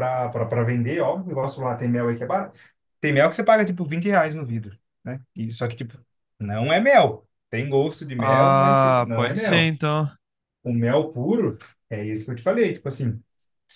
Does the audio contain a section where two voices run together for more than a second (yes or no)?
yes